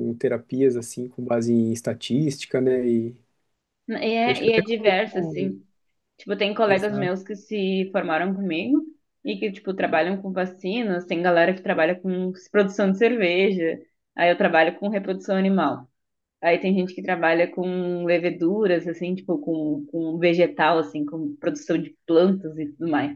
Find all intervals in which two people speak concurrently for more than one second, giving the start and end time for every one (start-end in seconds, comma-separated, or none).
4.2-5.5